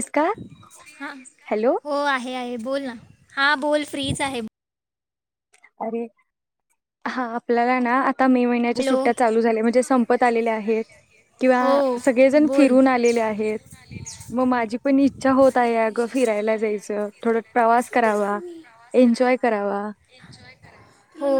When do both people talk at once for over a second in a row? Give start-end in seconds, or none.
none